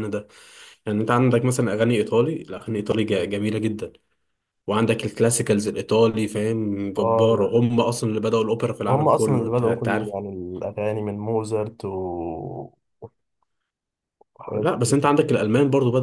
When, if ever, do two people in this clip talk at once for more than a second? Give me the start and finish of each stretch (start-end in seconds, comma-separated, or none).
8.9-10.1